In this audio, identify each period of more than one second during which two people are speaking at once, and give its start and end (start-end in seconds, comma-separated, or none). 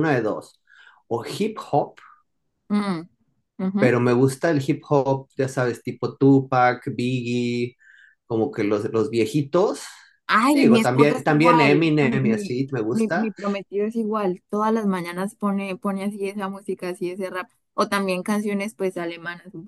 10.5-13.3